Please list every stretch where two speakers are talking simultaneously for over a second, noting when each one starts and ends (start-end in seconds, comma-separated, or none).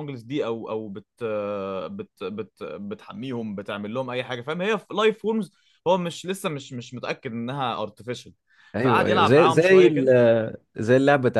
8.8-10.1